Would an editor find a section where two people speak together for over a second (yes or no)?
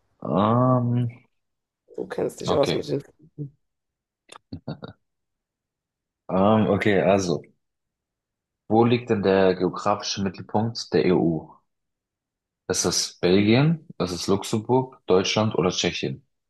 no